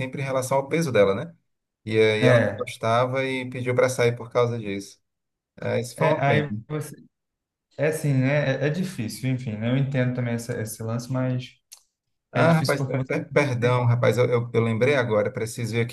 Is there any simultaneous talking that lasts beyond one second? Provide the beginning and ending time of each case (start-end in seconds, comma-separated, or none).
12.3-13.8